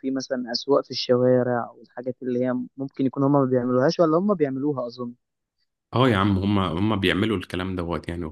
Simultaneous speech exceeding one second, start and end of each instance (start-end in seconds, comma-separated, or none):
none